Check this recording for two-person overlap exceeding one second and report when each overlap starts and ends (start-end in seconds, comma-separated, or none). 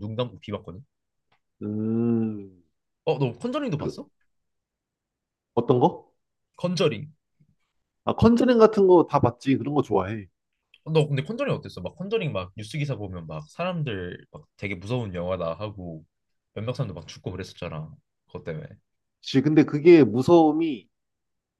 none